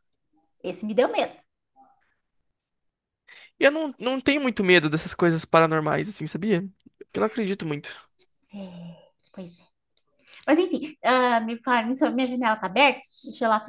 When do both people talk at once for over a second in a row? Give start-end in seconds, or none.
none